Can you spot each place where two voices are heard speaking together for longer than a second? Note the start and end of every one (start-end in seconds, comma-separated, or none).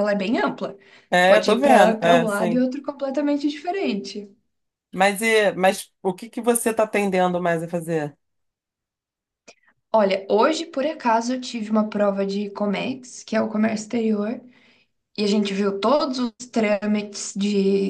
1.2-2.6